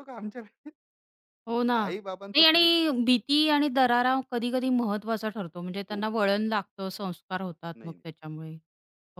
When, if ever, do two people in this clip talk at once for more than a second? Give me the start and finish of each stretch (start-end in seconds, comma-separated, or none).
none